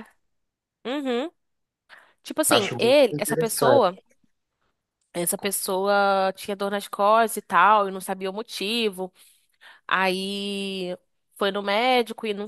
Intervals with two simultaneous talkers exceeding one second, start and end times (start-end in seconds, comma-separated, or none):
2.5-4.0